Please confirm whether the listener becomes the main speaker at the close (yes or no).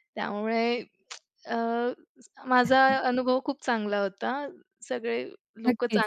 yes